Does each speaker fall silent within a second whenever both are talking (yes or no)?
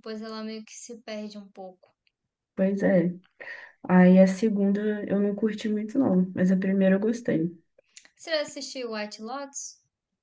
yes